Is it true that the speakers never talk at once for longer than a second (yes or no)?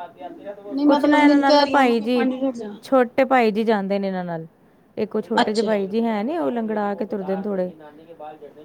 no